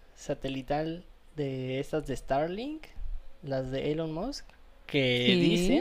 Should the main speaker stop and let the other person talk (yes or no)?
no